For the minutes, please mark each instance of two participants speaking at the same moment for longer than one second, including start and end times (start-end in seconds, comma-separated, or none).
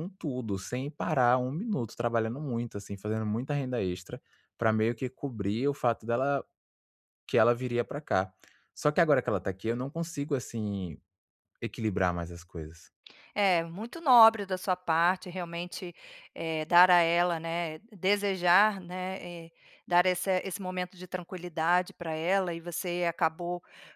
none